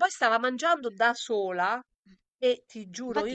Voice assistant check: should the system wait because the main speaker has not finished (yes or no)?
no